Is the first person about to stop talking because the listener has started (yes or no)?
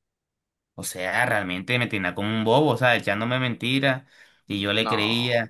no